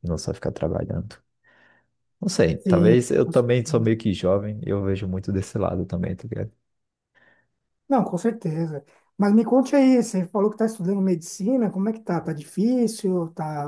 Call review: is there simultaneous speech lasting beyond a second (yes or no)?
yes